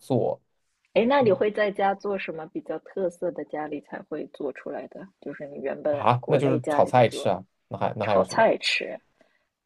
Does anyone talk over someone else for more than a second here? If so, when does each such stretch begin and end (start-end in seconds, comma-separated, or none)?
5.9-7.3